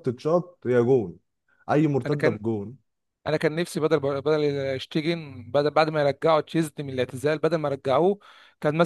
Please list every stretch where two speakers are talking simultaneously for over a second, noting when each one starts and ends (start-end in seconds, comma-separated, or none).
none